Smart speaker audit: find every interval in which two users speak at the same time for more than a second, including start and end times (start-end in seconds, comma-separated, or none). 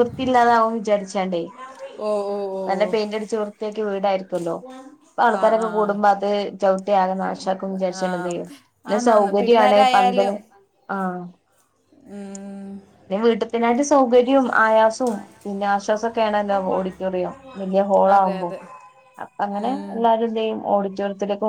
8.9-10.3